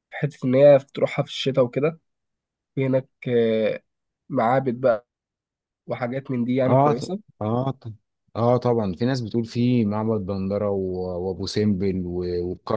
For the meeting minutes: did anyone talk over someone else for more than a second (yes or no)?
no